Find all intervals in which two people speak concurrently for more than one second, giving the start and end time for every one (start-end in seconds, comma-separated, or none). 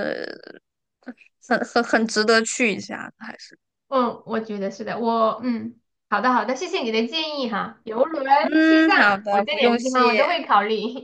8.6-10.4